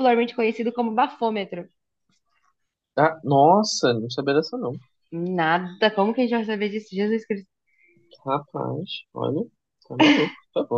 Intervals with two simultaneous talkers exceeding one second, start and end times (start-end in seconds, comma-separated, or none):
none